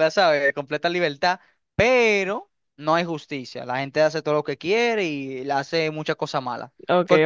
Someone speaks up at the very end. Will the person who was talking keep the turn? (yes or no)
no